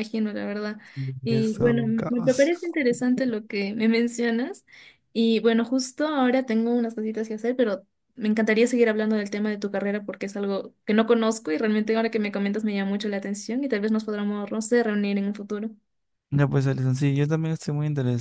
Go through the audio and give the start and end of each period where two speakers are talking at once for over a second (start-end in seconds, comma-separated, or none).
1.2-2.5